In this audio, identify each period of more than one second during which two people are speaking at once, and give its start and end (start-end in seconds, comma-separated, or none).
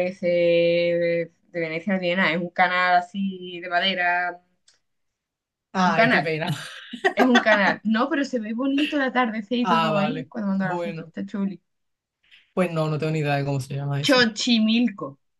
9.6-11.1